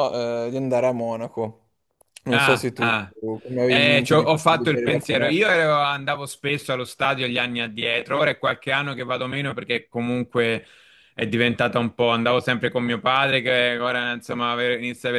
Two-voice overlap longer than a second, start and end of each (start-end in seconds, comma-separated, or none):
3.6-5.3